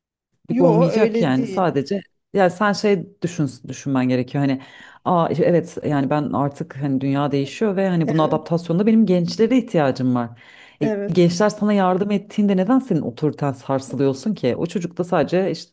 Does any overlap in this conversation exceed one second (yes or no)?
yes